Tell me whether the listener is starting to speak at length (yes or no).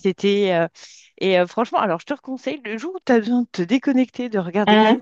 no